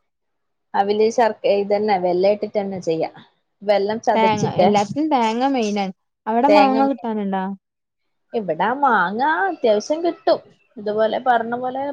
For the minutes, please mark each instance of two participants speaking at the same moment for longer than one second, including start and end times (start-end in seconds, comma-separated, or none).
none